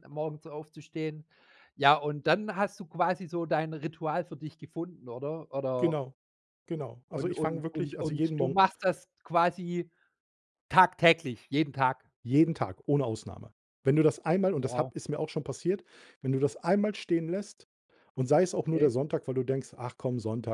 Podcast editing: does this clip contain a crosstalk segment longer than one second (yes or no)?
yes